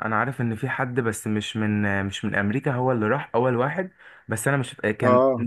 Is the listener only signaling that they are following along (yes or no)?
yes